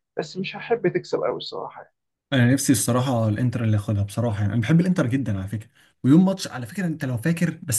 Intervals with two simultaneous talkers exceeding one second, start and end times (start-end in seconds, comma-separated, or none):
none